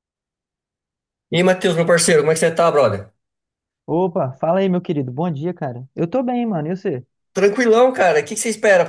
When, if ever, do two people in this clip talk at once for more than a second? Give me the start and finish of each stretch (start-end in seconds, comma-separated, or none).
none